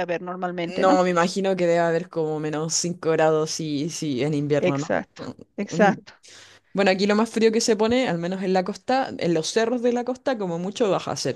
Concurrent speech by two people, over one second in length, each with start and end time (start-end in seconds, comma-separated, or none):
none